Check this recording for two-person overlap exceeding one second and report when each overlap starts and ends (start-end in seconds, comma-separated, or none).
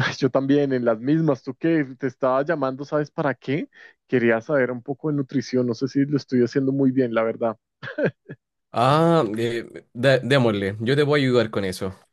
none